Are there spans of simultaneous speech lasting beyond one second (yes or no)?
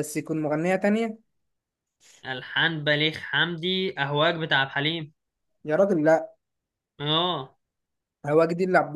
no